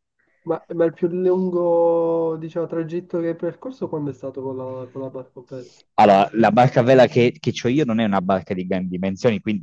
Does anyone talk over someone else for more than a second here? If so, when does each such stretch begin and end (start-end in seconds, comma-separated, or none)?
none